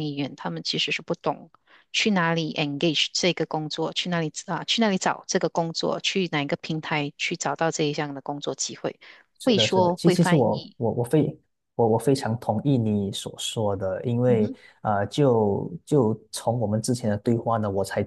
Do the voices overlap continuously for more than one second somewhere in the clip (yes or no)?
yes